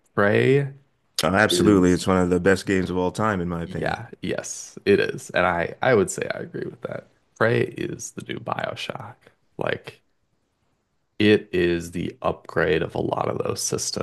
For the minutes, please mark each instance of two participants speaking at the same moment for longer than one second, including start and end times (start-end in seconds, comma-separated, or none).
none